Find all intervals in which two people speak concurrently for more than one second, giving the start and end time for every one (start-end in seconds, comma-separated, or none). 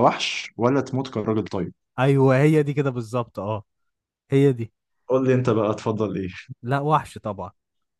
none